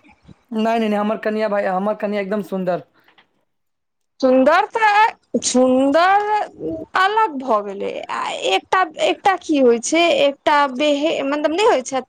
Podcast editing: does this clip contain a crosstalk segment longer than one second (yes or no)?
no